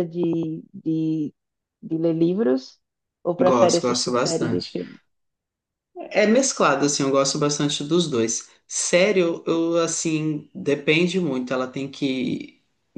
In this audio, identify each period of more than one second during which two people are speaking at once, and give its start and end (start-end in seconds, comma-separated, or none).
3.4-4.7